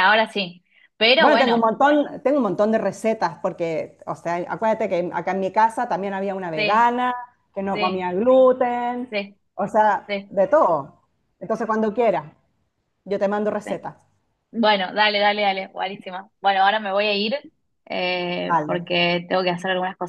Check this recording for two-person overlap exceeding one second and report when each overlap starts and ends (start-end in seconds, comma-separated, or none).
none